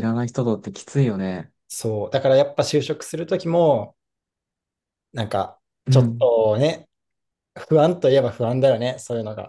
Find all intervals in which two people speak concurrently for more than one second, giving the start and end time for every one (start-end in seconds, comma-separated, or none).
none